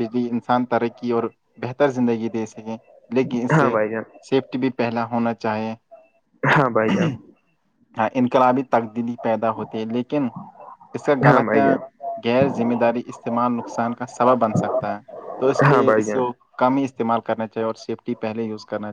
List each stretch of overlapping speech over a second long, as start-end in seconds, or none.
none